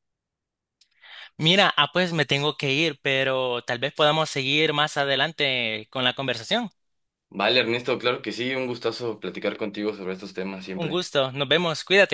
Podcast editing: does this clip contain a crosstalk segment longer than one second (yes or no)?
no